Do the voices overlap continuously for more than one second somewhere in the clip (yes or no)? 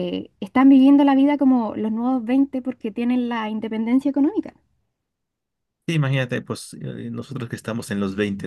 no